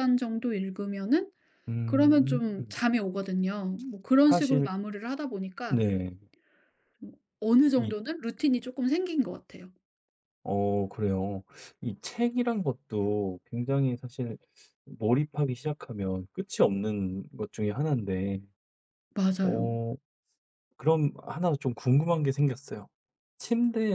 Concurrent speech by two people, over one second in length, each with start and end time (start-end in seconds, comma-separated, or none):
none